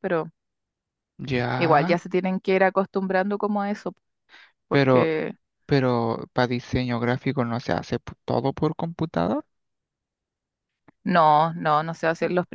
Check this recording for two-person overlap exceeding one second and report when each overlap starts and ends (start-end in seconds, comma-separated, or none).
none